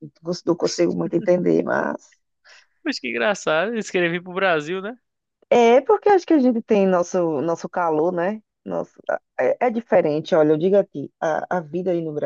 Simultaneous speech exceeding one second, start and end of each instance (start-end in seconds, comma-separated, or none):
none